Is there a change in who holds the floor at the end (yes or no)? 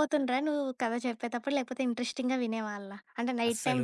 yes